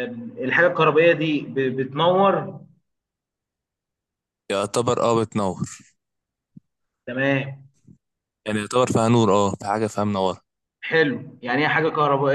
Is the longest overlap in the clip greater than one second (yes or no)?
no